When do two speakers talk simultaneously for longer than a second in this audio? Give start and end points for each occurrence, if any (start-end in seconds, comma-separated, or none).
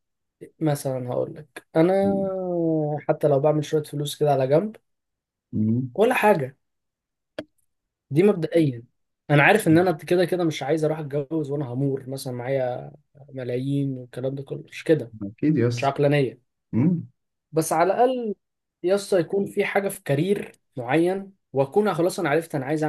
none